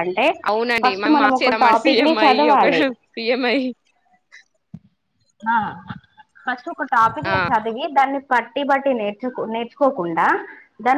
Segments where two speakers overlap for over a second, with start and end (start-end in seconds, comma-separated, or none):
0.8-2.7